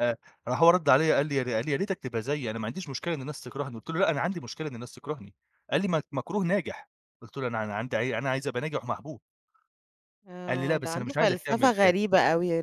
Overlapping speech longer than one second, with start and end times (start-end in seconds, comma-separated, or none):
10.5-11.9